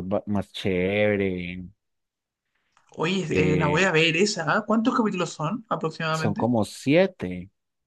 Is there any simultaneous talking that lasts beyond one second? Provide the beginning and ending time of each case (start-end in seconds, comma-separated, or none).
none